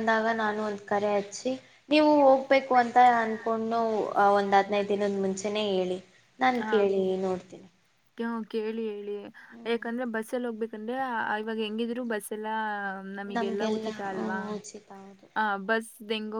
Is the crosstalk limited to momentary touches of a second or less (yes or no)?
yes